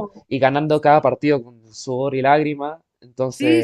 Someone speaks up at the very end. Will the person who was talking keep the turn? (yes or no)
no